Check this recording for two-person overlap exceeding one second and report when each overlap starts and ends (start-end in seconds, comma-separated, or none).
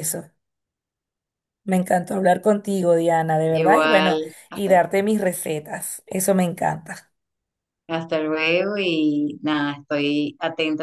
3.5-4.8